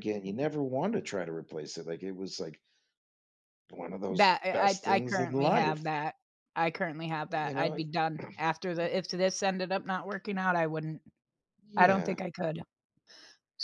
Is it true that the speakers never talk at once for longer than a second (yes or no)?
no